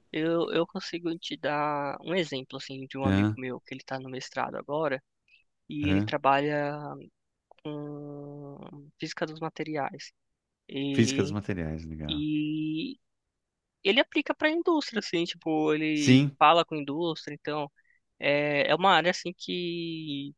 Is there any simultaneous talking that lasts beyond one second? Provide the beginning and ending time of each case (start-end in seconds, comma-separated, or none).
none